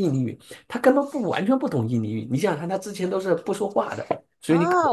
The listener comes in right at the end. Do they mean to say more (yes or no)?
yes